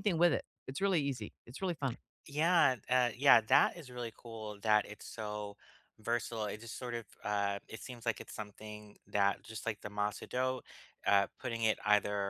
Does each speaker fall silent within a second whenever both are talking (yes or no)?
yes